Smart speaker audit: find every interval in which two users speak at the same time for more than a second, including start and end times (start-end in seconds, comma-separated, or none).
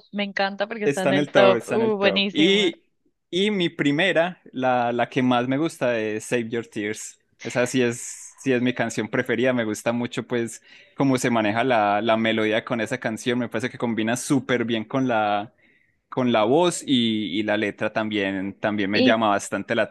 0.8-2.7